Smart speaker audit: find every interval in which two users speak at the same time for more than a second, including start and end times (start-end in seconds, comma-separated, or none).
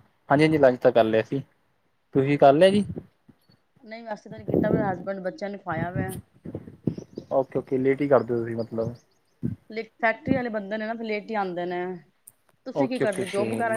none